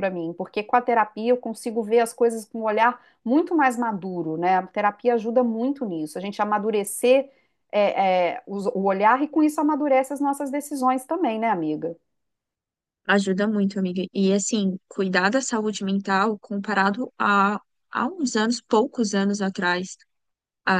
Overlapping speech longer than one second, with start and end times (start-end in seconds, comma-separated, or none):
none